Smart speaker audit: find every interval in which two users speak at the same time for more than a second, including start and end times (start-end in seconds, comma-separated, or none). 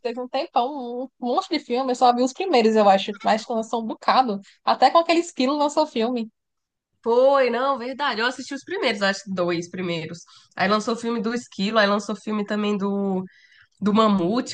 none